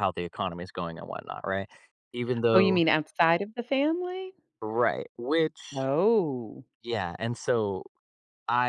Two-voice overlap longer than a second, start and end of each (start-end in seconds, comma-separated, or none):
none